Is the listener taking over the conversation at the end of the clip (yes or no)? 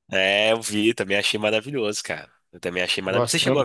no